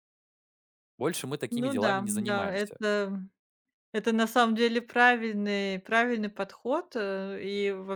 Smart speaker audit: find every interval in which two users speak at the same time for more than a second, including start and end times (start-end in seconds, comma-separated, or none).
1.5-2.8